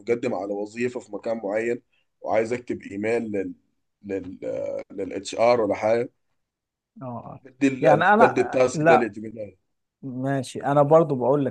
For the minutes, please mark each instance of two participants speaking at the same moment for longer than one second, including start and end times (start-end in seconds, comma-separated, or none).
7.8-9.1